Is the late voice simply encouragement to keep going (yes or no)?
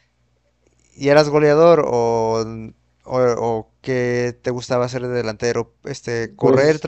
yes